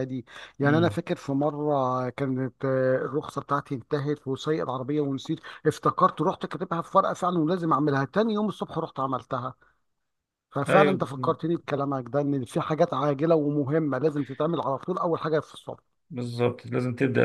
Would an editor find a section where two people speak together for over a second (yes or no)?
no